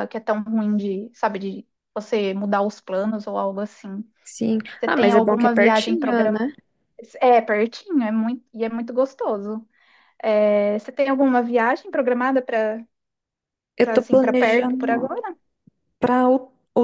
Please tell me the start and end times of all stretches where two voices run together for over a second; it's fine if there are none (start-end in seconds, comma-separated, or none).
4.8-6.4, 13.8-15.2